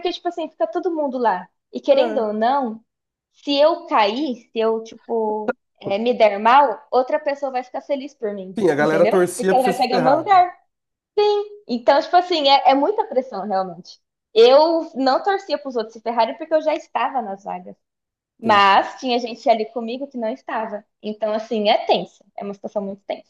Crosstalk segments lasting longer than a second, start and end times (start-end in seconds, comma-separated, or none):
8.6-10.4